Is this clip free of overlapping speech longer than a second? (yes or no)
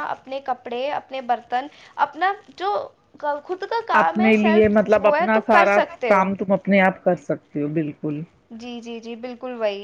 no